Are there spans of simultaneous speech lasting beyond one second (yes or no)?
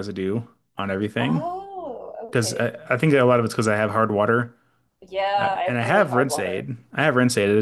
yes